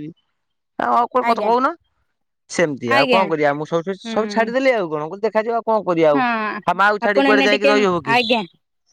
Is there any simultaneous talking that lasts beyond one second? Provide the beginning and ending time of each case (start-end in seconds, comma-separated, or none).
6.2-7.7